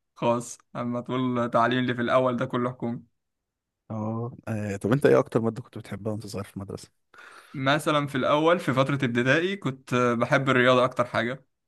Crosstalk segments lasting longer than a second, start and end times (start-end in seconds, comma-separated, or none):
none